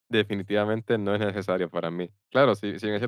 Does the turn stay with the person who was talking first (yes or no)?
yes